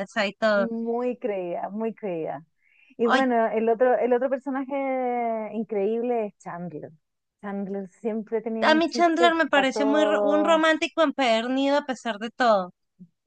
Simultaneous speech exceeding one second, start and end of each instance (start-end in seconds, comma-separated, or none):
8.6-10.6